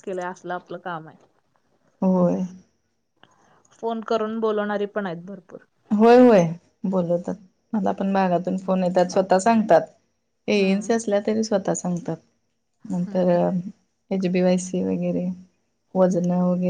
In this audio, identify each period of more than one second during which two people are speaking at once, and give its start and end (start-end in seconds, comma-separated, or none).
none